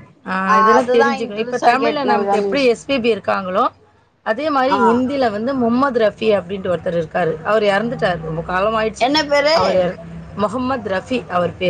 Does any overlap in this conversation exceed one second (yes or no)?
yes